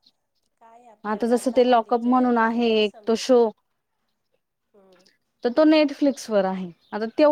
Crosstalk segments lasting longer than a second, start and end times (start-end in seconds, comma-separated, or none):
1.3-3.4